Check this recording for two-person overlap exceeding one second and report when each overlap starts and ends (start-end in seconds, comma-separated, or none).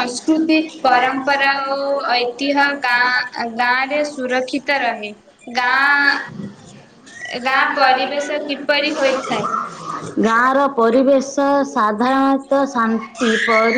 none